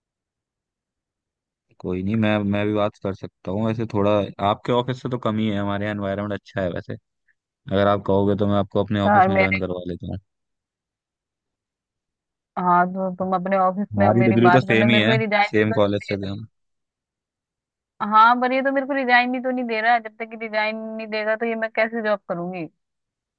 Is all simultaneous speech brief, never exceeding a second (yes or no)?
no